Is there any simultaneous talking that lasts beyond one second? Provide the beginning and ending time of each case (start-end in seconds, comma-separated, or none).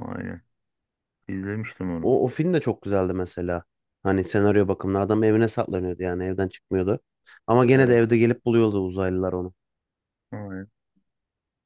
none